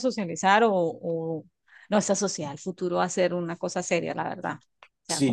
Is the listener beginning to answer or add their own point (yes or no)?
yes